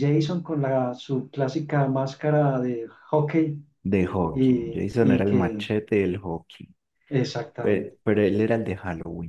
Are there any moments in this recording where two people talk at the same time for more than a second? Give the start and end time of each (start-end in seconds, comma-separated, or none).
4.3-5.7